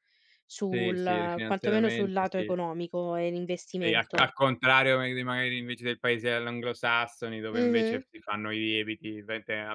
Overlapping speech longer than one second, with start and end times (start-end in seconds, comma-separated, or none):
0.7-2.5